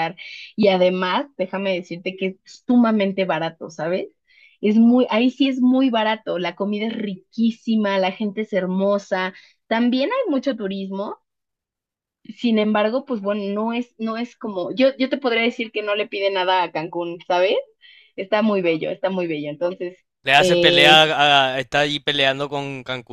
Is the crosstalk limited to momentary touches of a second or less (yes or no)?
yes